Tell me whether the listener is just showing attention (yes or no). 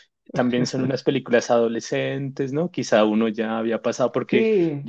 yes